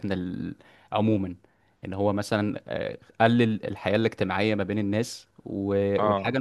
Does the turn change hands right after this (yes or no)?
no